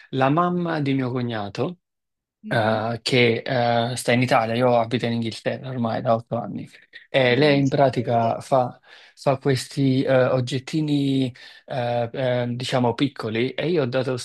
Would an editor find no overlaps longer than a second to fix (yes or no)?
no